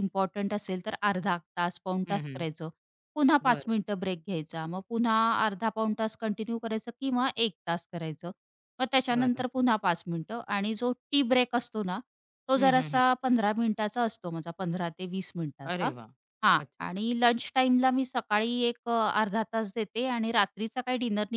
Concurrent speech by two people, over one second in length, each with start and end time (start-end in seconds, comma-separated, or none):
none